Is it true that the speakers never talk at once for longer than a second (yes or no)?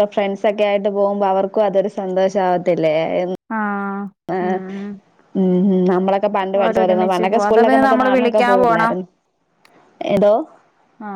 no